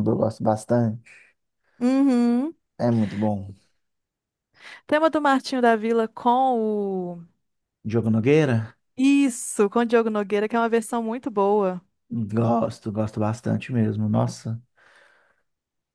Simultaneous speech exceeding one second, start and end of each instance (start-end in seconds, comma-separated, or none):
none